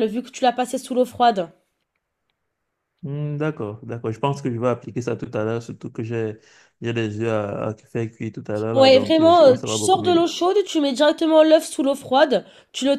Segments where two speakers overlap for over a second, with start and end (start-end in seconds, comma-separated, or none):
8.7-10.3